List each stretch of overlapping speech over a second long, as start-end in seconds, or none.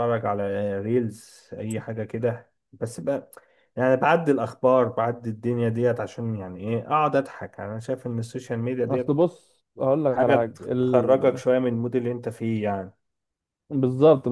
none